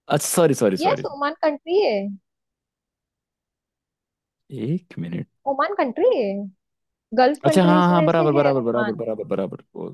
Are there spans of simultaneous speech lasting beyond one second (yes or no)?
yes